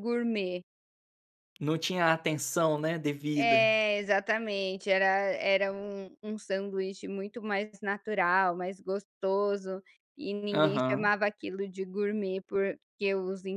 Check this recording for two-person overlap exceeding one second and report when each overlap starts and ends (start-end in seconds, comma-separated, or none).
none